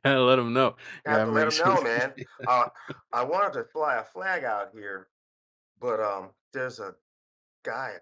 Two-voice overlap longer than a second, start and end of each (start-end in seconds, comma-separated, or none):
1.1-2.5